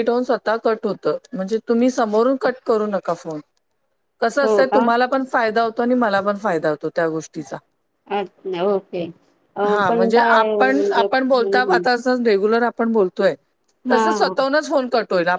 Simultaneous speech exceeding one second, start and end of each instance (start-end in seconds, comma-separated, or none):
9.7-11.8